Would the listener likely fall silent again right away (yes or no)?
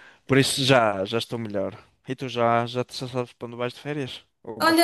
no